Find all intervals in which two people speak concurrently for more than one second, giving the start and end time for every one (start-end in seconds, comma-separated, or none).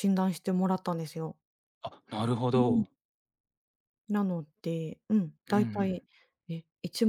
none